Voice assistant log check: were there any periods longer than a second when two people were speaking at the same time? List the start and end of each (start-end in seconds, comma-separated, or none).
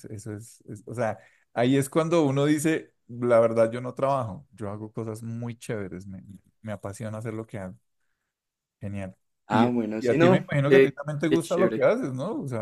9.5-11.9